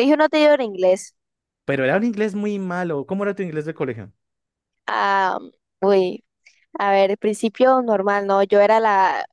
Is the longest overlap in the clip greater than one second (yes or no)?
no